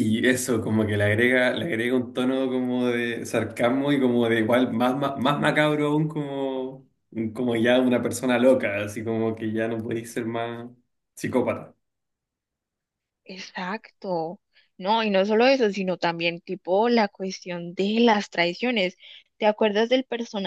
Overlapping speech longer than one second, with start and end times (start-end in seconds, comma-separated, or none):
none